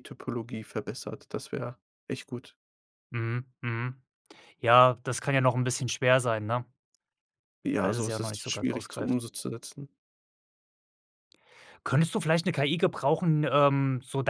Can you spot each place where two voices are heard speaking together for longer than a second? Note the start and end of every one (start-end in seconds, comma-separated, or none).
7.8-9.2